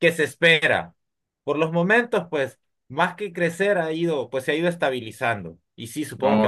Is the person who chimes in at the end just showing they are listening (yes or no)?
yes